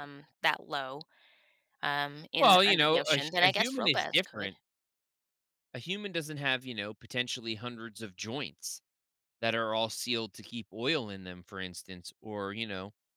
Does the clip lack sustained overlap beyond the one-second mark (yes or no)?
no